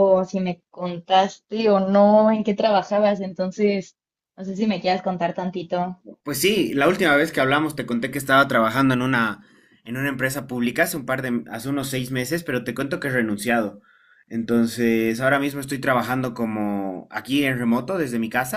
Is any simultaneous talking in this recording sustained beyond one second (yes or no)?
no